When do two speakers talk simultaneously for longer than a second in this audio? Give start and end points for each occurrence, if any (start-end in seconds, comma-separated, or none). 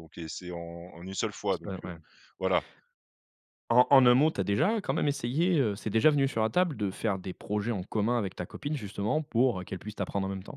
none